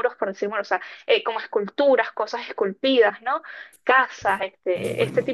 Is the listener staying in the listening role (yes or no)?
yes